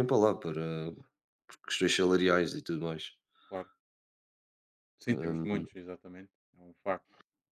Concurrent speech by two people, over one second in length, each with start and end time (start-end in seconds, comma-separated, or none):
none